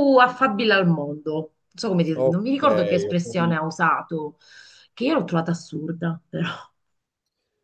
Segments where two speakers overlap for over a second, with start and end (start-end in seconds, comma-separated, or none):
2.1-3.6